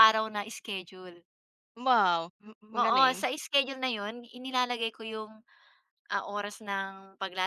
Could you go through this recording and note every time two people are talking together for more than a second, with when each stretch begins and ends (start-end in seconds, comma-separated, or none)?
none